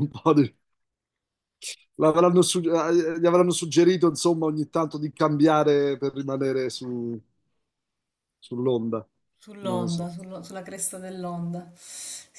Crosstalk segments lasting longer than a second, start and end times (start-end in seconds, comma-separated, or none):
none